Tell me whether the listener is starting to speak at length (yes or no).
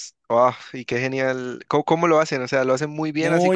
yes